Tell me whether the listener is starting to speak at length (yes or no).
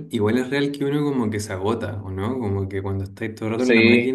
no